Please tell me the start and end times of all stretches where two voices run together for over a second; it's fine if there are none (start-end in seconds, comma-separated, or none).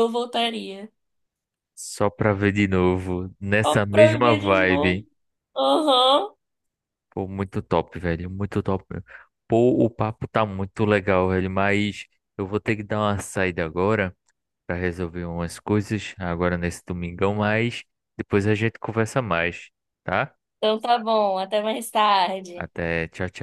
3.6-5.0